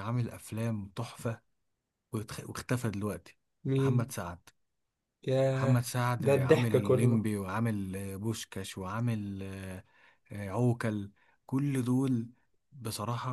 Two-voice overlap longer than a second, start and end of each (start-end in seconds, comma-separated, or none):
5.5-7.3